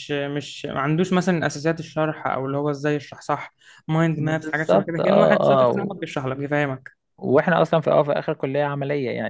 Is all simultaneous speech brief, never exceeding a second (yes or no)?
no